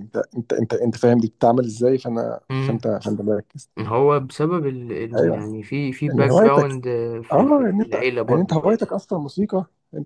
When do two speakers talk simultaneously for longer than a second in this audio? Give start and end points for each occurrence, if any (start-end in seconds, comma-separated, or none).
7.3-8.9